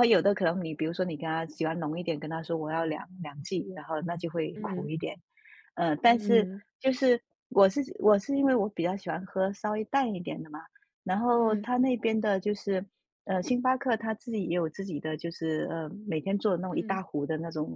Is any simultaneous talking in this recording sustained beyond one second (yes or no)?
no